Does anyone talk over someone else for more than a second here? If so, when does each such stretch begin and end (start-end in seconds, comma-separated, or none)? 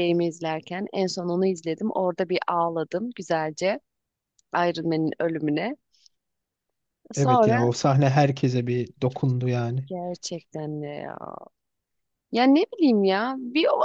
none